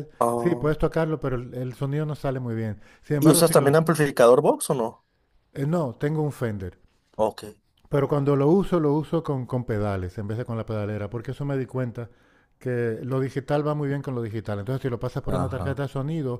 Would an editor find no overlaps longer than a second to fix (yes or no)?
yes